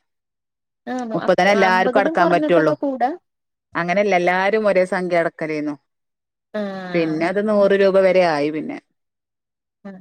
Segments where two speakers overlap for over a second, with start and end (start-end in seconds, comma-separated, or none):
1.1-2.7